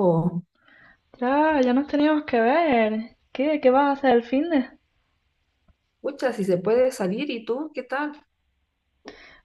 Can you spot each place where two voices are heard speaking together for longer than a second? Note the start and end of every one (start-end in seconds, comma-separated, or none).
none